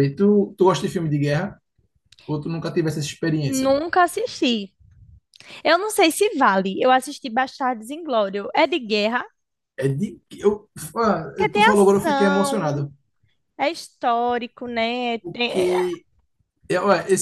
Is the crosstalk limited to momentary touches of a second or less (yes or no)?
no